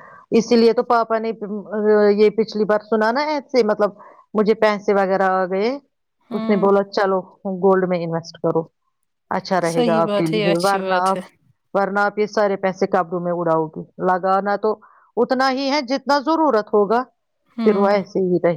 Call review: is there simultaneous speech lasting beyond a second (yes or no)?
yes